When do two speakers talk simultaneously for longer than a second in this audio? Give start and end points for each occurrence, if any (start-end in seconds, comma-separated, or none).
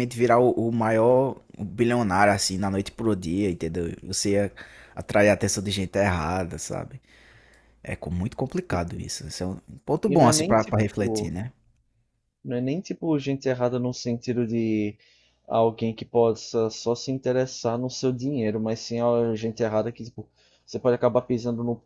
10.1-11.3